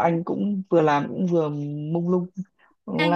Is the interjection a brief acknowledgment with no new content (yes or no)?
no